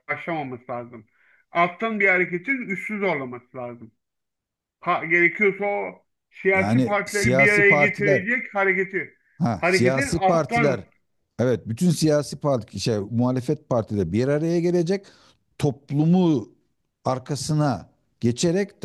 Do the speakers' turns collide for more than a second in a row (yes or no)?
yes